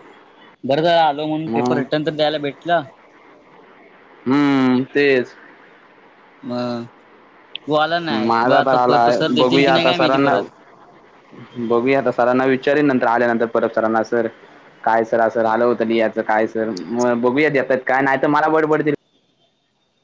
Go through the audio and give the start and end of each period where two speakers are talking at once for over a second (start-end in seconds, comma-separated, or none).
8.1-10.3